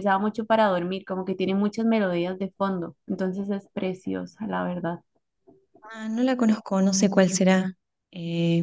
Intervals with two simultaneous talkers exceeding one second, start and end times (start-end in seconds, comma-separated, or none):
none